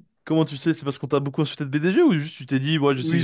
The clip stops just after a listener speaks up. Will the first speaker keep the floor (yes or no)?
no